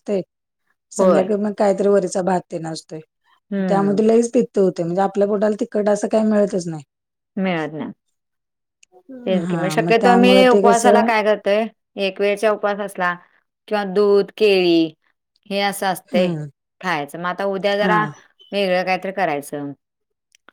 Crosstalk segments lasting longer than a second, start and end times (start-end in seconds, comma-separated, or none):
9.5-11.1